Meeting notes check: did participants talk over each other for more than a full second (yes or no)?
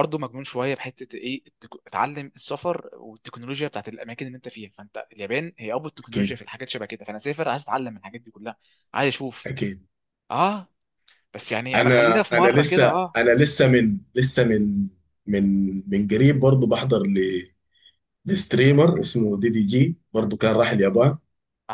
yes